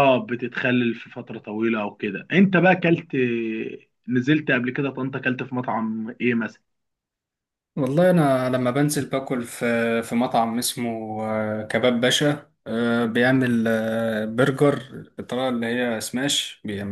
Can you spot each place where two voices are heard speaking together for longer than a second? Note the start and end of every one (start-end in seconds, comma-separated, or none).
none